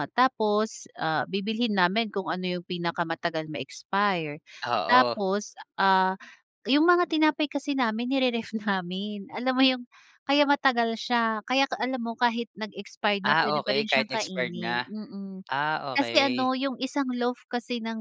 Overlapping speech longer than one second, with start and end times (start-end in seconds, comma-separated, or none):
13.2-14.9